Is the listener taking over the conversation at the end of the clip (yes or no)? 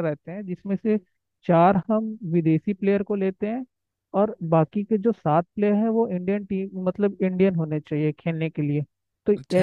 yes